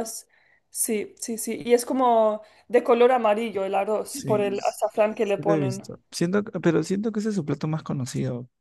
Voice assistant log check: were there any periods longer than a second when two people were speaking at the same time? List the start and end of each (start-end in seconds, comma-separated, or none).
4.1-5.9